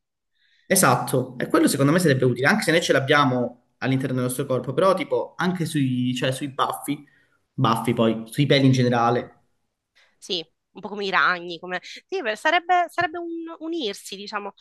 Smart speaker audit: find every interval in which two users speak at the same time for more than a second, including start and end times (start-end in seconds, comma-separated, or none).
none